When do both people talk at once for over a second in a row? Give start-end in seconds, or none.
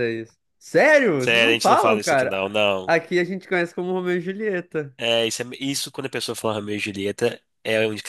1.2-3.0